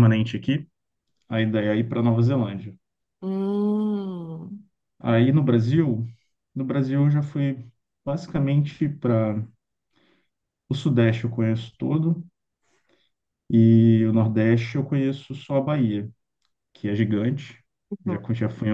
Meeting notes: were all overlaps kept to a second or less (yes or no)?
yes